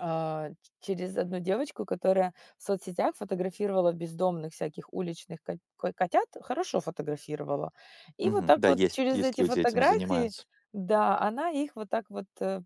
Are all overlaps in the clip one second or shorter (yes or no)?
no